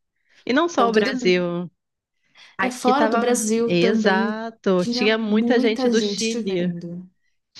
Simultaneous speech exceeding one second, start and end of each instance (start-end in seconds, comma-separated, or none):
2.6-6.7